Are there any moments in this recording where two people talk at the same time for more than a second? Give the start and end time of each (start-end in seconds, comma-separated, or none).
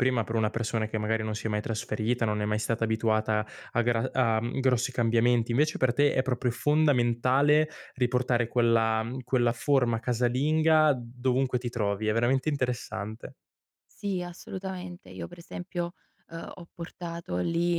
none